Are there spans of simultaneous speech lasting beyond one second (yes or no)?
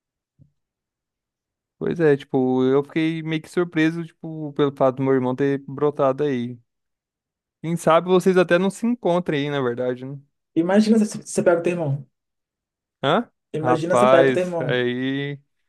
yes